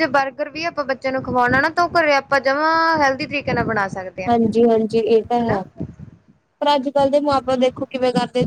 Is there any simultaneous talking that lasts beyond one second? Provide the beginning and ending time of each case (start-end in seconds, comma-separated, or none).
none